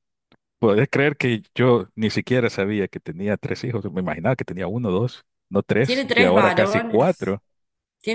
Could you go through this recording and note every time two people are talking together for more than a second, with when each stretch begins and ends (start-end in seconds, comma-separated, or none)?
5.8-7.4